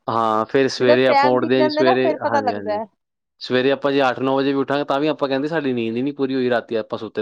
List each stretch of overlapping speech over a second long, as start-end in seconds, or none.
0.8-2.8